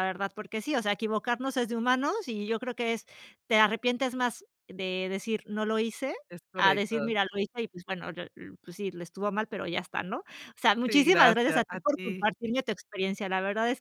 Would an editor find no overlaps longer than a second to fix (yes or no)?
no